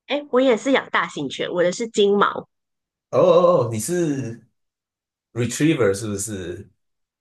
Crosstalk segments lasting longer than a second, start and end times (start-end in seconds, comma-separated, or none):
none